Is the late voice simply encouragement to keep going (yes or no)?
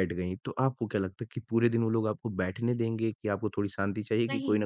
yes